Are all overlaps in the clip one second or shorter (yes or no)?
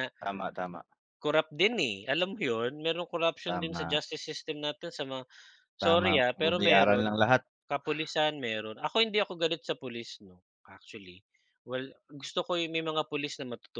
no